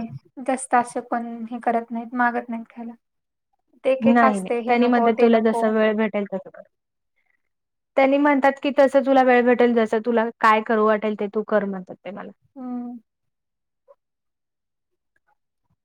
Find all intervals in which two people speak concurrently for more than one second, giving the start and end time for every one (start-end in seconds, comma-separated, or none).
none